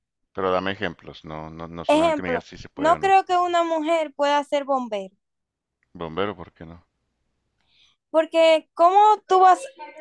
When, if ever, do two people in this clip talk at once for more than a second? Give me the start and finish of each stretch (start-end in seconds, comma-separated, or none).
1.9-3.2